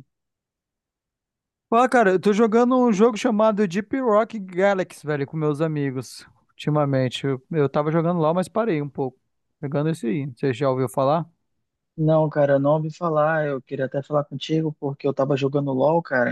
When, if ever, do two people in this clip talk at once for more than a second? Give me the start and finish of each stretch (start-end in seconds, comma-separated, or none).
none